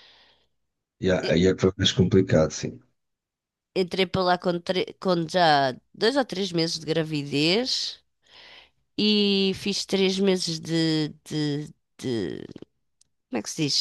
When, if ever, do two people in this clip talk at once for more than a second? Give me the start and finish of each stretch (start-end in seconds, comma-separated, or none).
none